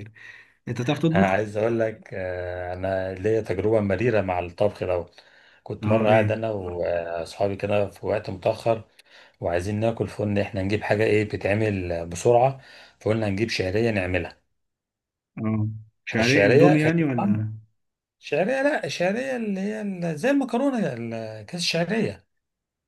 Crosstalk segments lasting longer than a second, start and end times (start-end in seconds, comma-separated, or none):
16.2-17.5